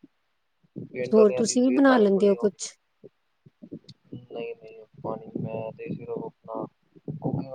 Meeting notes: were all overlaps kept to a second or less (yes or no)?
no